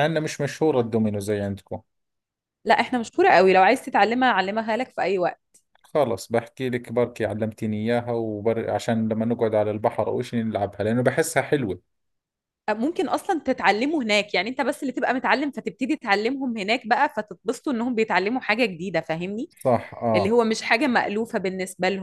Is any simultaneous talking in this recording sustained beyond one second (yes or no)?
no